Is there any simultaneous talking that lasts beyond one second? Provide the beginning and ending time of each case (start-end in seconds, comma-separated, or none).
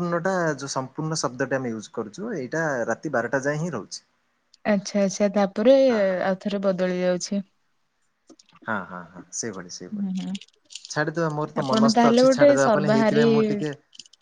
11.6-13.3